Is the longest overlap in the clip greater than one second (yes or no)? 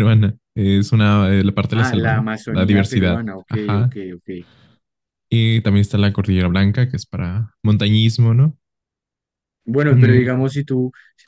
yes